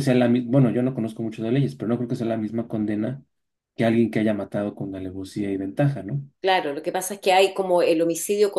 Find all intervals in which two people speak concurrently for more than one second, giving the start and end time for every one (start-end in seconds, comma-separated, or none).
none